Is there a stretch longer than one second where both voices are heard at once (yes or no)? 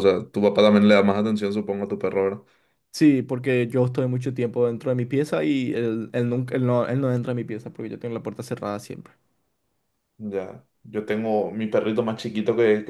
no